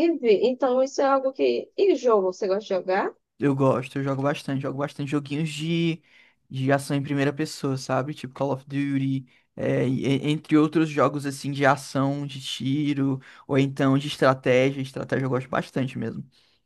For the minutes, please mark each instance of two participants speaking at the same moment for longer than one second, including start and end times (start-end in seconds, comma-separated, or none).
none